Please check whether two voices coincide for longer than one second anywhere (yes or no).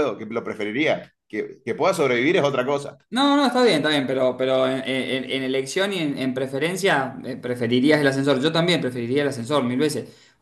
no